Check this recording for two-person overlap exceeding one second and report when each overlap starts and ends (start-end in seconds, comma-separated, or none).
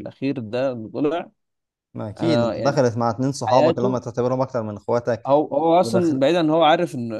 none